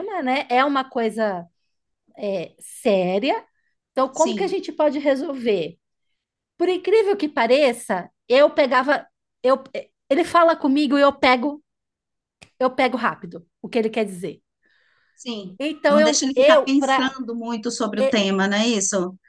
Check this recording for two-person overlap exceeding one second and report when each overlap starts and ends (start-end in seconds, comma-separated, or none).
15.6-17.2